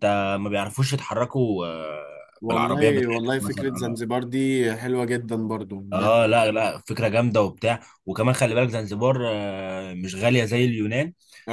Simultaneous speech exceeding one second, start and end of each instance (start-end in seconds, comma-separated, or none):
2.4-4.0